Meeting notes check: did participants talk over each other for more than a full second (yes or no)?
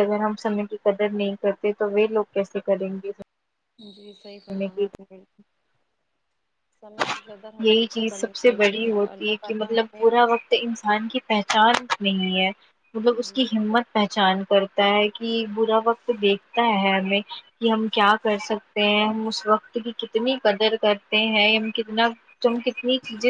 yes